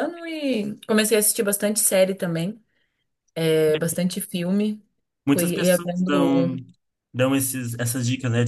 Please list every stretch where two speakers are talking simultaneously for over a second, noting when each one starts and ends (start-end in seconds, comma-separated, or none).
5.3-6.5